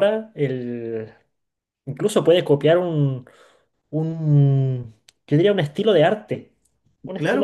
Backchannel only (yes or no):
no